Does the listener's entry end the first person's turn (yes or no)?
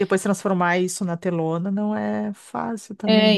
yes